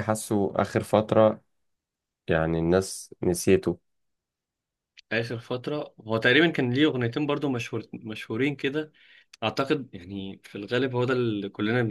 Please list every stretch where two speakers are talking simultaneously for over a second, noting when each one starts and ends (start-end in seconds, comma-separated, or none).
none